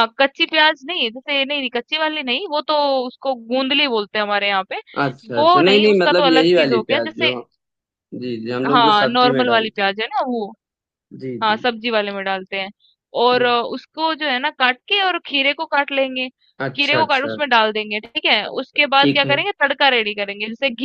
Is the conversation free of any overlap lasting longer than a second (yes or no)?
no